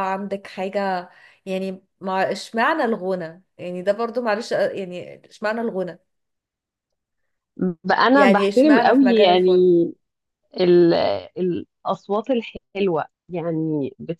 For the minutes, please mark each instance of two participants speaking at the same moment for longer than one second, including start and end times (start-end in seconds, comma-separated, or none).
8.1-9.5